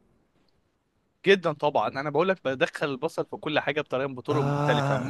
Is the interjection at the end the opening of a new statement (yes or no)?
no